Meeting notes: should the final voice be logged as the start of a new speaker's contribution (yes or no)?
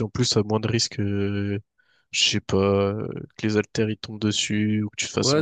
yes